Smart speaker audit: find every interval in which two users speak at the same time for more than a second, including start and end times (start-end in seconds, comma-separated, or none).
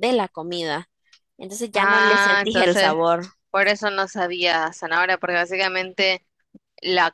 1.7-2.9